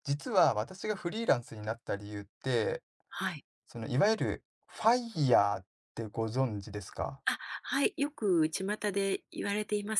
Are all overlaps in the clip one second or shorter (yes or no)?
yes